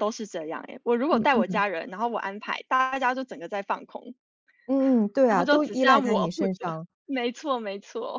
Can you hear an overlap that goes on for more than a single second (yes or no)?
yes